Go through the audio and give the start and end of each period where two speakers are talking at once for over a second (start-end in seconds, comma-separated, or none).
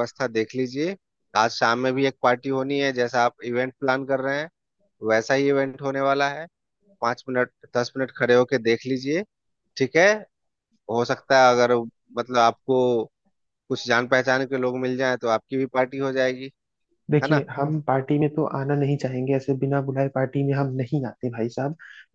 none